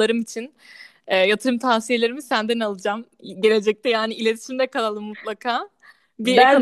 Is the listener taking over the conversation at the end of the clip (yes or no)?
yes